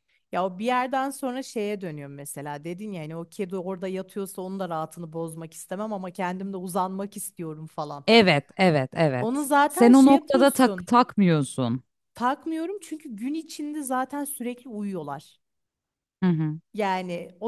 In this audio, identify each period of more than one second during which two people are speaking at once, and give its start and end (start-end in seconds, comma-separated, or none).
9.2-10.9